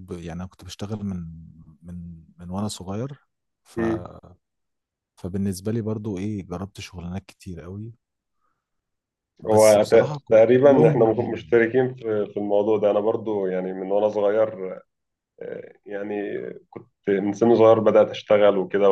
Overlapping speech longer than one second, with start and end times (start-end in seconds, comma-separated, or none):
9.5-11.6